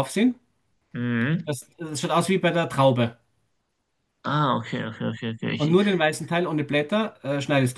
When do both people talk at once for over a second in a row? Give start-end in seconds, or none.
none